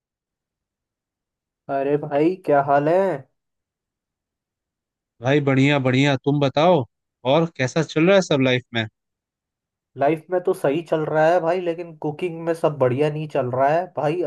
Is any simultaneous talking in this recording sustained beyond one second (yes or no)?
no